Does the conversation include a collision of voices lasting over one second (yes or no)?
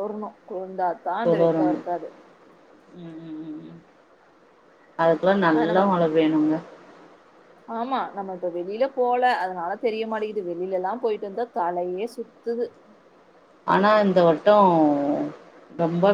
no